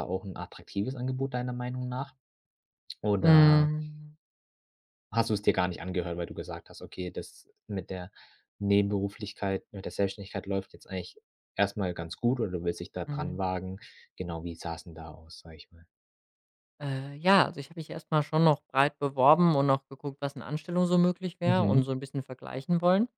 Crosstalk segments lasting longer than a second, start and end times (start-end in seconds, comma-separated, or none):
none